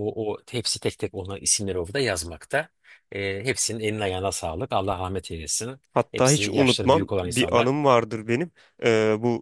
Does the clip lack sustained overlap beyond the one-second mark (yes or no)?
no